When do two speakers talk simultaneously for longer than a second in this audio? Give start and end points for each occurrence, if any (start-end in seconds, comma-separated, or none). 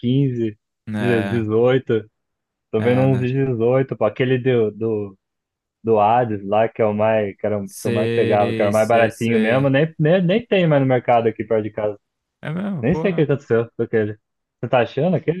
7.6-9.7